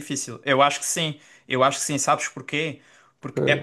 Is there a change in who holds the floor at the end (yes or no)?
no